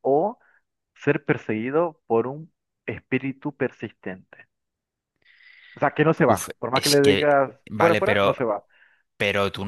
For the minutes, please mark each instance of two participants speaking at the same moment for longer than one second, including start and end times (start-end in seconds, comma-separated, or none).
6.3-8.3